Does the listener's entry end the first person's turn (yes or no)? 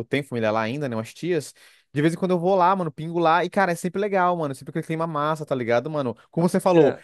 no